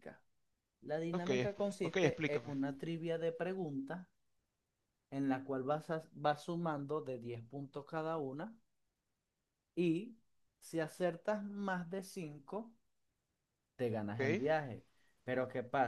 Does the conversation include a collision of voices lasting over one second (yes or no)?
yes